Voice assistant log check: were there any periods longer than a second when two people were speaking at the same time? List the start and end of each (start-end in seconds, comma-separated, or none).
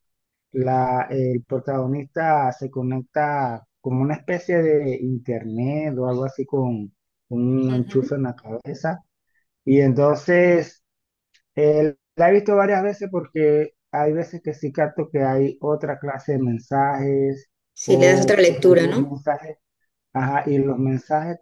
17.8-19.2